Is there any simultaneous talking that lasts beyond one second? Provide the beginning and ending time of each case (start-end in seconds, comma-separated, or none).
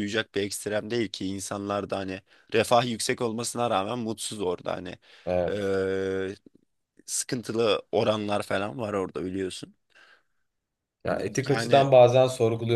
none